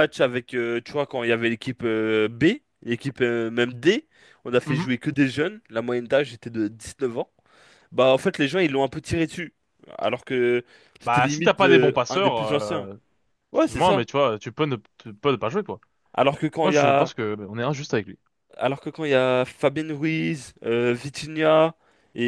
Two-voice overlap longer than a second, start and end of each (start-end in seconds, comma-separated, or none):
11.0-12.9